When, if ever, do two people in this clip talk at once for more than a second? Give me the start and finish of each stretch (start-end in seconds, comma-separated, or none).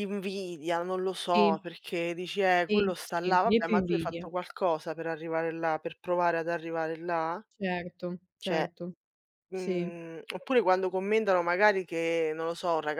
2.7-4.3